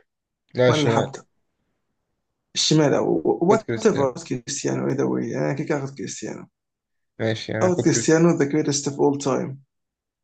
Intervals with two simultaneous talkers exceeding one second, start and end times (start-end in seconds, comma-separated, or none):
none